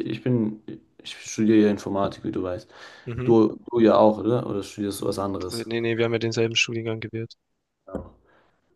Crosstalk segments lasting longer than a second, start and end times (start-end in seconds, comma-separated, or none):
none